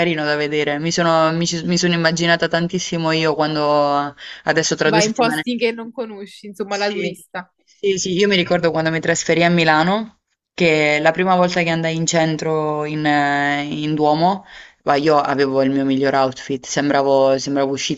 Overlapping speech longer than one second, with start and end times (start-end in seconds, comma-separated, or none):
none